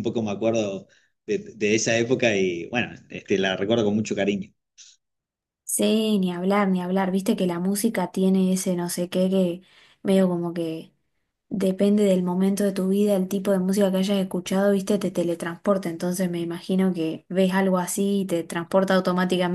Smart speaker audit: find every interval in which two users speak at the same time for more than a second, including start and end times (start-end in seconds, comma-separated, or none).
none